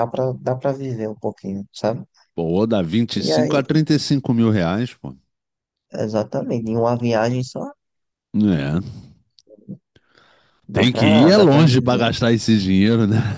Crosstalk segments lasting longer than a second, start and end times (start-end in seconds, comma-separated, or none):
10.7-12.1